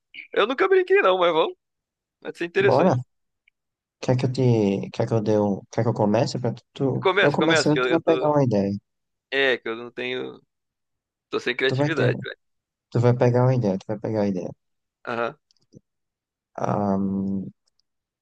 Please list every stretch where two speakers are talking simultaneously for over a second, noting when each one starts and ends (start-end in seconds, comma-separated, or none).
7.0-8.3